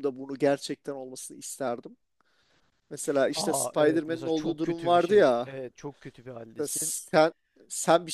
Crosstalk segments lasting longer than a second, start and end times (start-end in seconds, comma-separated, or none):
3.3-5.5